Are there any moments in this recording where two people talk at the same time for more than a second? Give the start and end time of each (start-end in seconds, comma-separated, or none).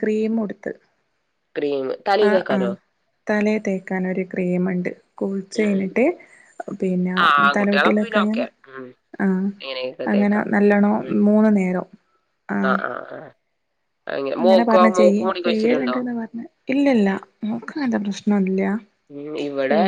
none